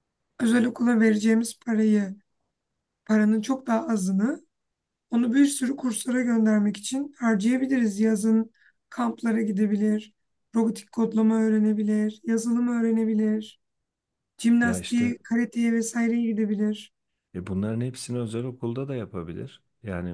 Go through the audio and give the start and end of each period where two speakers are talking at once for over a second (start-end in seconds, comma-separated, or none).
none